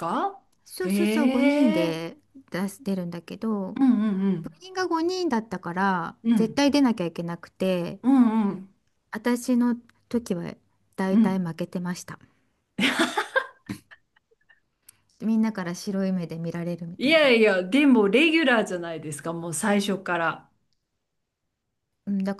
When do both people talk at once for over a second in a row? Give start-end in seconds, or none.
0.8-2.0